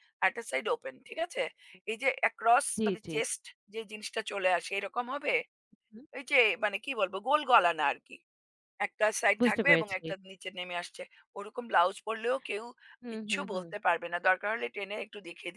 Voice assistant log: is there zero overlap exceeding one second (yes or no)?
yes